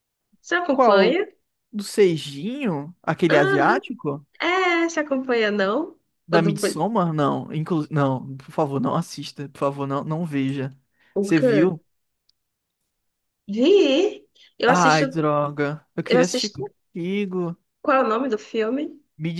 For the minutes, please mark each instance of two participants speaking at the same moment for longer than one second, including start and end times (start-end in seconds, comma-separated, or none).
none